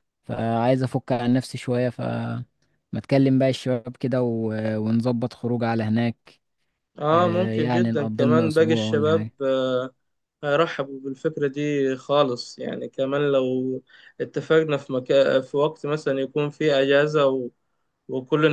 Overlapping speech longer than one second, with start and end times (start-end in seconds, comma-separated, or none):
7.1-9.3